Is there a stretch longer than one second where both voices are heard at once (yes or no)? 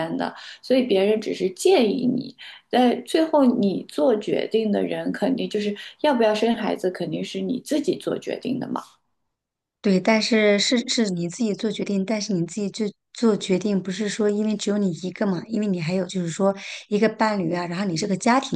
no